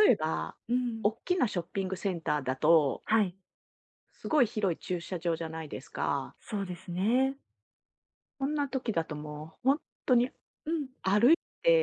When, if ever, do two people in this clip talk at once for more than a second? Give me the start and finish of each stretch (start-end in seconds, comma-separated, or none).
none